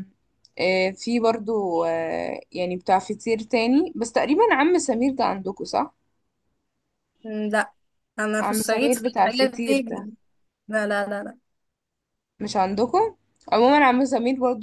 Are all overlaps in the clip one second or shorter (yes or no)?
no